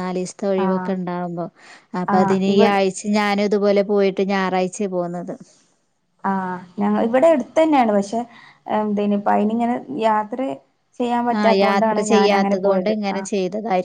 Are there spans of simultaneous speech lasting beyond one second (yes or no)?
yes